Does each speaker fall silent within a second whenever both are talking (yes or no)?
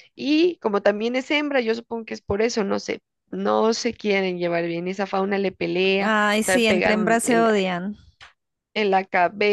no